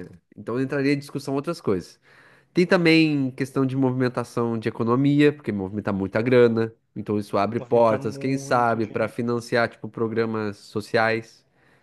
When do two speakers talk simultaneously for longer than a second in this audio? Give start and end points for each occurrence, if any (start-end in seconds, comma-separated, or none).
7.6-9.2